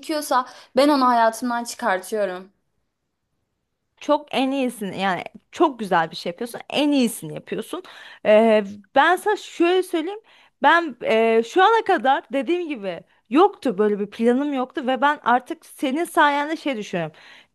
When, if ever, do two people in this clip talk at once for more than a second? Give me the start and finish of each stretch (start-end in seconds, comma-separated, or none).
none